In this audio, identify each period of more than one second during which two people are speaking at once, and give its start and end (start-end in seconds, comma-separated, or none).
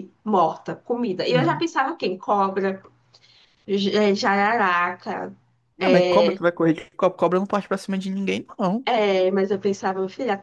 none